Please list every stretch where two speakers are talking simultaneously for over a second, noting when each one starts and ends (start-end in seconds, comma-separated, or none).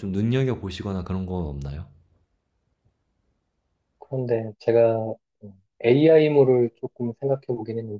none